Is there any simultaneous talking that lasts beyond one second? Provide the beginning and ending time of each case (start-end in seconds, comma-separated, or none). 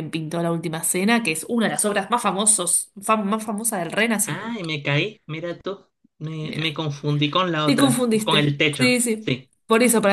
7.6-9.5